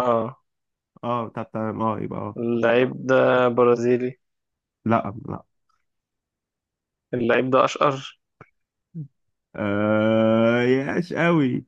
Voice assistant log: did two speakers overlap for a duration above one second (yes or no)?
no